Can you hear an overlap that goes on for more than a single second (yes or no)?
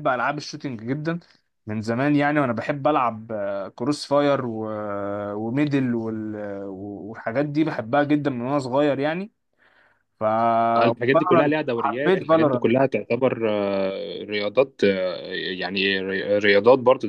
yes